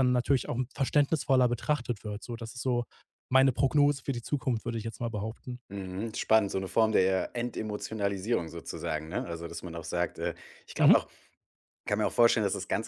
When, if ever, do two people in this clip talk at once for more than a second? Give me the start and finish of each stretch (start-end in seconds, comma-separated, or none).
none